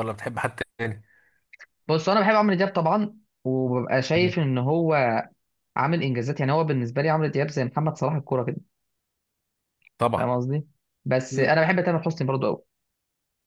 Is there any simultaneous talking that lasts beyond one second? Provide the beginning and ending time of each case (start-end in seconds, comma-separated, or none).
none